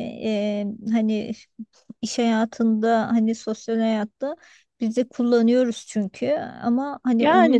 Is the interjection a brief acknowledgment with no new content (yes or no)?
no